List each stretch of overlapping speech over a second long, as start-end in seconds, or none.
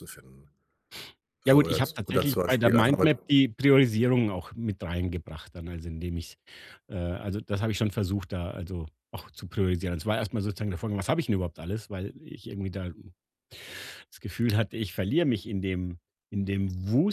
1.5-3.1